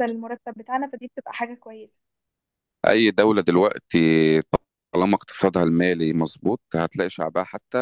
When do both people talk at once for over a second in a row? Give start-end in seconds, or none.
none